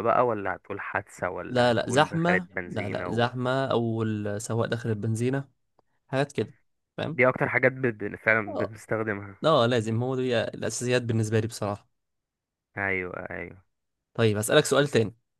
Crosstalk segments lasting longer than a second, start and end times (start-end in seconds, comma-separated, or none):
1.5-3.3